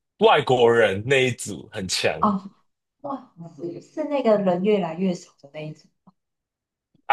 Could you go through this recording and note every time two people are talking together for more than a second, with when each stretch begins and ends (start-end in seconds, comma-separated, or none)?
none